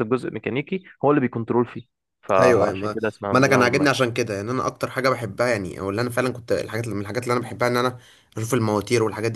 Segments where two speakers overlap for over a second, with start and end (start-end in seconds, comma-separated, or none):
2.4-4.0